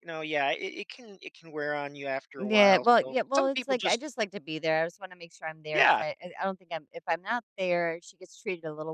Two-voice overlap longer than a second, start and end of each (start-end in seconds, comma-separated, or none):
2.4-4.0